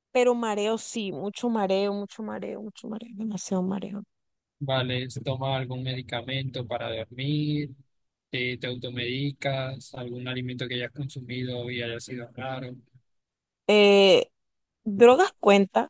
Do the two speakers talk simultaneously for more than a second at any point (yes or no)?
no